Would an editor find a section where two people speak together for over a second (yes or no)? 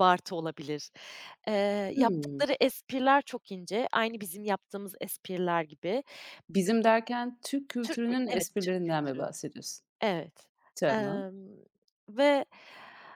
yes